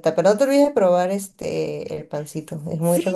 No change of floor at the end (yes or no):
no